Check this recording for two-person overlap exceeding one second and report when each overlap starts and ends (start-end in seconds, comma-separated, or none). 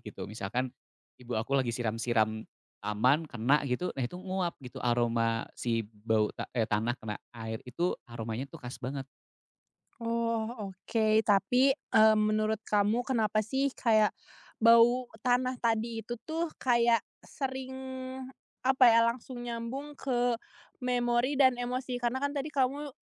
none